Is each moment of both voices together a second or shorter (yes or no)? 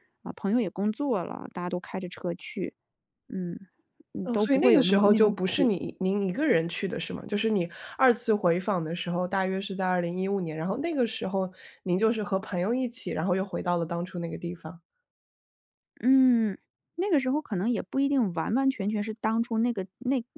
no